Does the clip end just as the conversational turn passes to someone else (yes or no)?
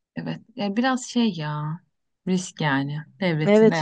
yes